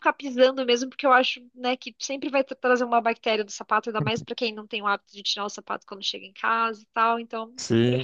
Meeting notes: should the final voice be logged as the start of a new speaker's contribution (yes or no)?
no